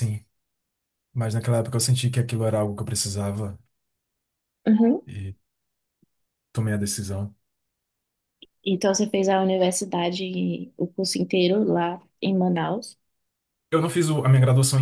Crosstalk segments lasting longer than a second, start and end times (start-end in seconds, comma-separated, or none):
none